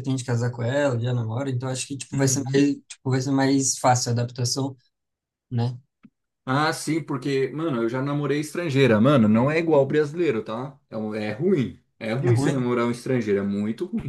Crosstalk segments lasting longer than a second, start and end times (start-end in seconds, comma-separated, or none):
none